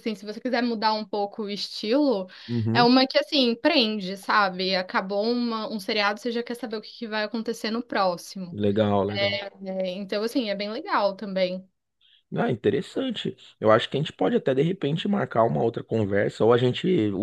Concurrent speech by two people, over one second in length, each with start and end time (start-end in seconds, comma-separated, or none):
none